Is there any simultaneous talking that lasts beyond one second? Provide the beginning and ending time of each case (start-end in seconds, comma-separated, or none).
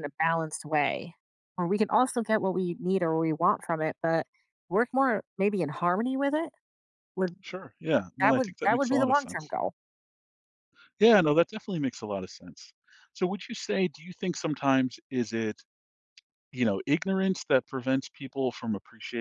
8.2-9.5